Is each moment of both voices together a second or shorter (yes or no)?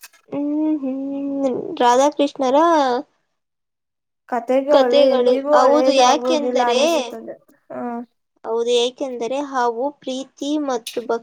no